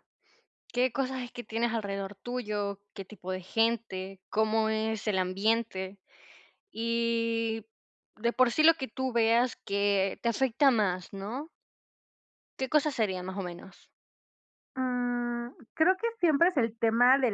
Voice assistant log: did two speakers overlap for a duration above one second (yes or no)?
no